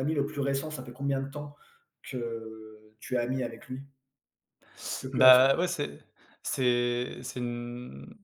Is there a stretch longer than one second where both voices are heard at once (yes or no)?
no